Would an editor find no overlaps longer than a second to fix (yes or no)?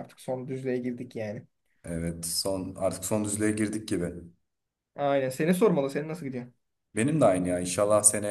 yes